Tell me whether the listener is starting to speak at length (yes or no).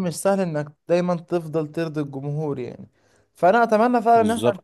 no